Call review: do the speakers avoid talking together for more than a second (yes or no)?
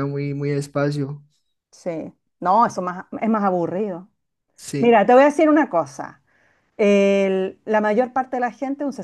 yes